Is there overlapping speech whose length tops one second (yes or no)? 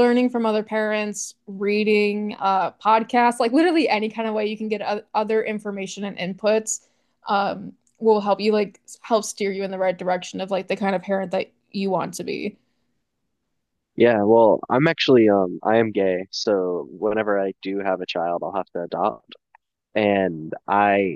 no